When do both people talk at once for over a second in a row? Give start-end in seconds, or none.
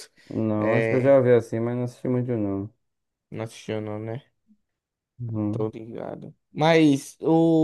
none